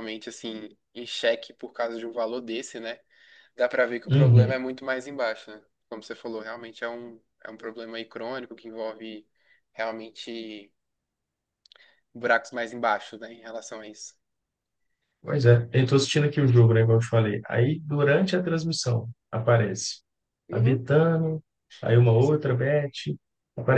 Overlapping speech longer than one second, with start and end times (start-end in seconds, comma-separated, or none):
none